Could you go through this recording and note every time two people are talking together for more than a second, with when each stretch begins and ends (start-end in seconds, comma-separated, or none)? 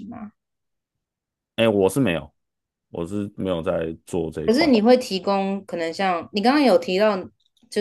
none